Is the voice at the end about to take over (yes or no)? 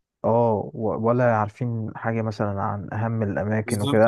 no